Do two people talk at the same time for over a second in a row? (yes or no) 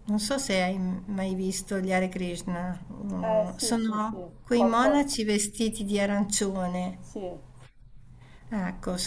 yes